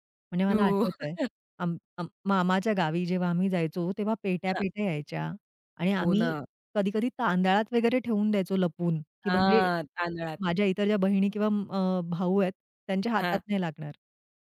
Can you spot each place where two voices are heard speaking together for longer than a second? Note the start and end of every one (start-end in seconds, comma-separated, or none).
none